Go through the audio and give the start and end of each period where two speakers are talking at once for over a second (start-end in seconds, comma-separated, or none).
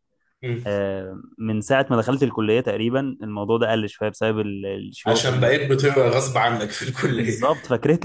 none